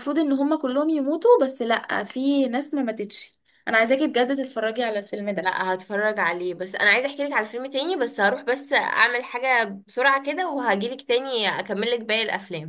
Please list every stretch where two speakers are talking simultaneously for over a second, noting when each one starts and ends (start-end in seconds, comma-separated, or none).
none